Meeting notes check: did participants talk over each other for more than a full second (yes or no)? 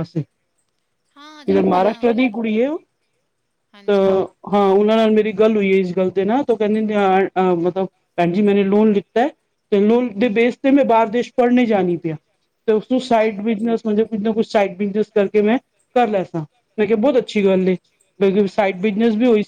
yes